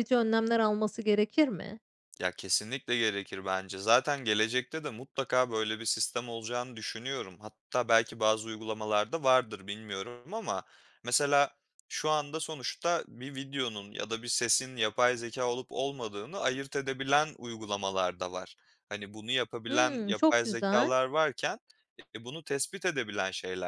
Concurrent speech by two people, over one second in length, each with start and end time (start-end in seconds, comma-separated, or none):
19.7-21.0